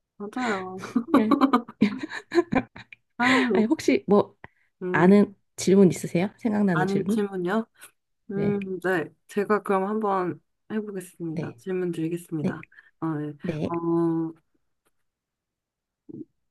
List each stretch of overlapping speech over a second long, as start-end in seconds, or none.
none